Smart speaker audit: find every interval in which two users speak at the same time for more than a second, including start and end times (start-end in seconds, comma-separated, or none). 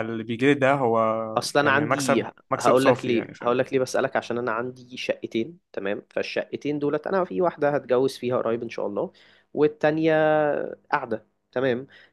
1.6-3.6